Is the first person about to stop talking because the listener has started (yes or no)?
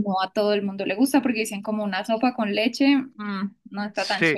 yes